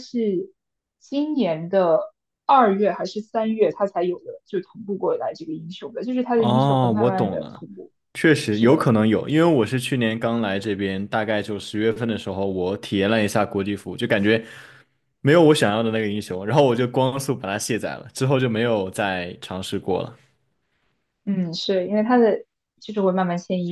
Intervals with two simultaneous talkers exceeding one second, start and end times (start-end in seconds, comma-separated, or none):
6.3-7.6